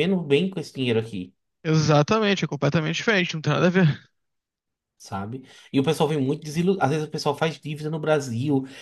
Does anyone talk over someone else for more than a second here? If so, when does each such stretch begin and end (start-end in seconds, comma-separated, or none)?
none